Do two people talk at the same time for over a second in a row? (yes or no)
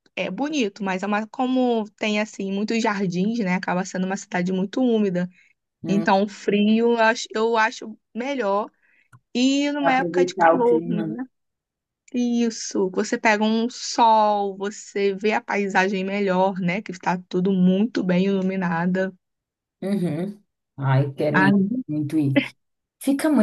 yes